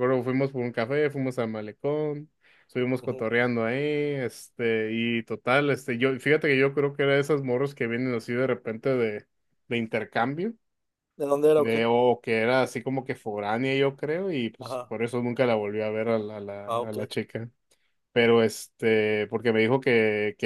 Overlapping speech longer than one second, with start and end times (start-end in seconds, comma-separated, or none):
none